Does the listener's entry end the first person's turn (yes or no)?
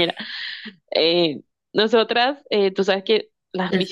yes